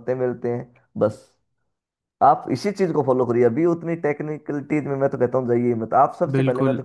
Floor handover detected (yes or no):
yes